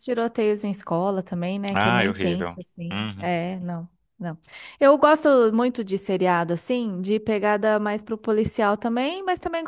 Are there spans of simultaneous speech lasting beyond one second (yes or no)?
yes